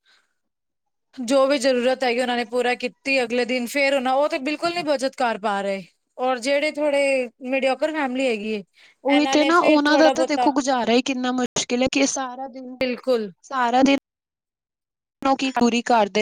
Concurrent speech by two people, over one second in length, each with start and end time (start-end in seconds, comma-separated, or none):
9.2-10.5